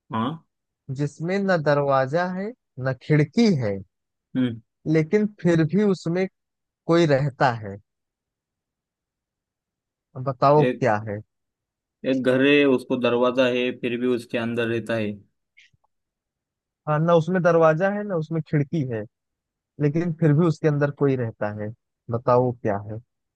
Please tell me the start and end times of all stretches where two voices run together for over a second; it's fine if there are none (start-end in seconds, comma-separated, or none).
none